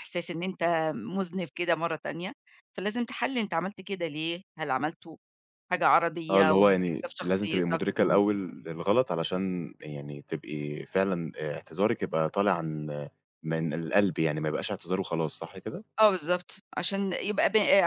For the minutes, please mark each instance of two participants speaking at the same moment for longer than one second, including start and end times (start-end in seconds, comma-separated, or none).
6.3-8.2